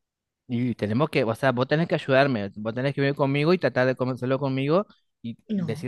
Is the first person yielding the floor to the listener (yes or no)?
no